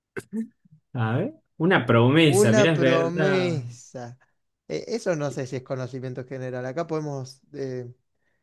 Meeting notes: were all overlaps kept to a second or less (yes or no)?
no